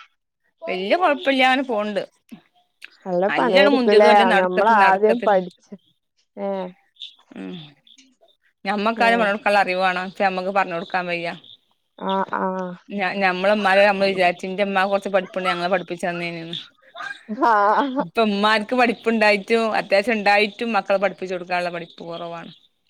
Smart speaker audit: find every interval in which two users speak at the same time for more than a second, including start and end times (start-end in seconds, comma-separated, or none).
3.3-5.3